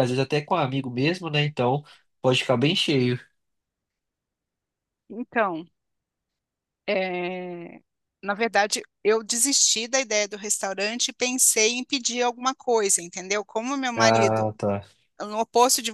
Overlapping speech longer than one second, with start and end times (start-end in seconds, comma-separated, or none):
none